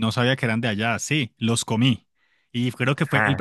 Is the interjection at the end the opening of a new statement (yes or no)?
no